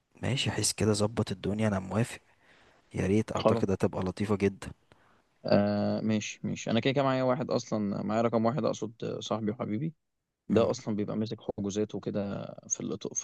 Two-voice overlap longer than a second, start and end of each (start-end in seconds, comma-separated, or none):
none